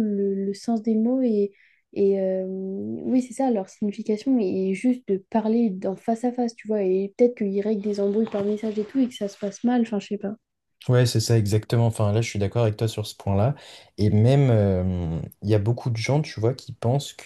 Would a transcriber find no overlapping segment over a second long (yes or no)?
yes